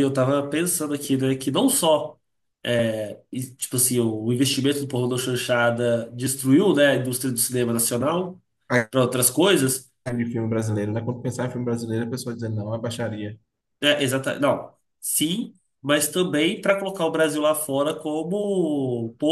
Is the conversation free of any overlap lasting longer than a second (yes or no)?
yes